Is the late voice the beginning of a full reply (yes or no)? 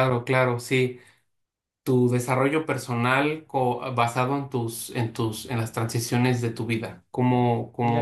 yes